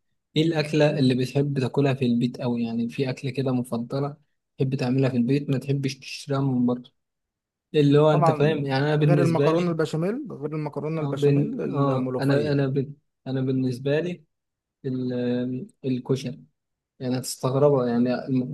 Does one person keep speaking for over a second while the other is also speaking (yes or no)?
yes